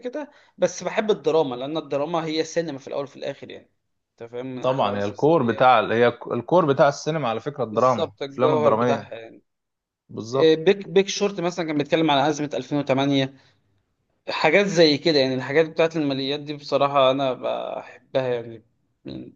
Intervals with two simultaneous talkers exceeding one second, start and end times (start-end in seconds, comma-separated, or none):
4.6-5.8, 7.7-9.1